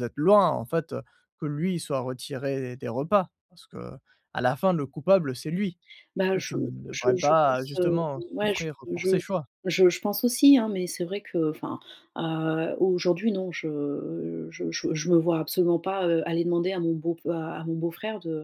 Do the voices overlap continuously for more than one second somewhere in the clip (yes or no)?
yes